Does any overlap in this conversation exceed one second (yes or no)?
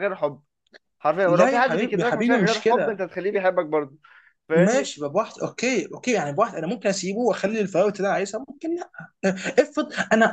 yes